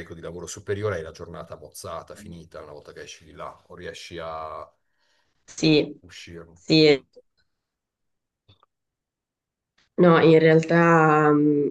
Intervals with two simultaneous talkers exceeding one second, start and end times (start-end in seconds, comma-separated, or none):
none